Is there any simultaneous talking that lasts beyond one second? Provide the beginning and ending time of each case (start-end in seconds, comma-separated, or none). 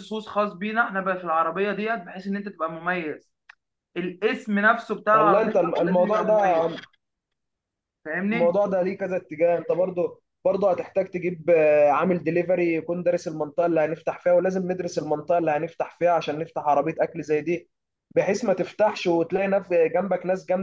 5.1-6.7